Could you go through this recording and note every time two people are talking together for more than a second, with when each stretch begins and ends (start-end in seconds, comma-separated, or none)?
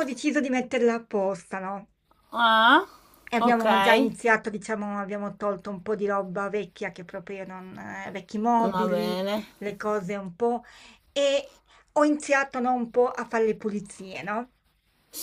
none